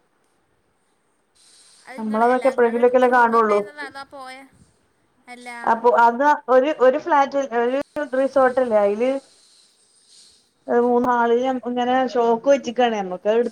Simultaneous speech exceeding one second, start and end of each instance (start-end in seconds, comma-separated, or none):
2.0-3.6